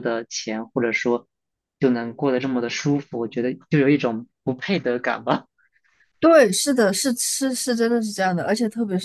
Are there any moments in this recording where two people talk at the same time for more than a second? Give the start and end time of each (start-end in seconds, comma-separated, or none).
none